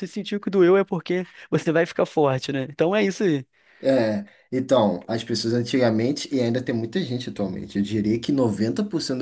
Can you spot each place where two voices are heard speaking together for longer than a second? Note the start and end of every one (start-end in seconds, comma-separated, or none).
none